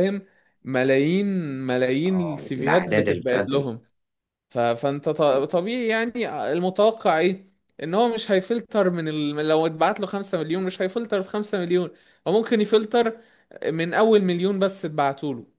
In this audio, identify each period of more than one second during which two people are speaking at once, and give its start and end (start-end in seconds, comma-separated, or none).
2.1-3.7